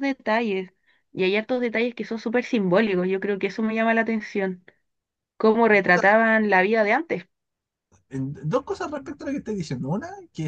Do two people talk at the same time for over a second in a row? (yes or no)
no